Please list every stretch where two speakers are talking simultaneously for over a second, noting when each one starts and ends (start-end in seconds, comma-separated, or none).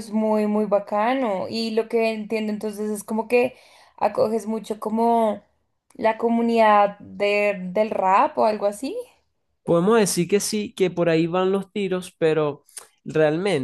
none